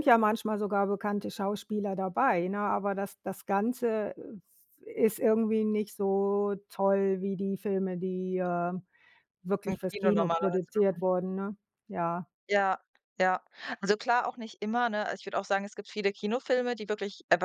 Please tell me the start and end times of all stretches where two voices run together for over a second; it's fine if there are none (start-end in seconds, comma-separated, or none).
9.7-11.0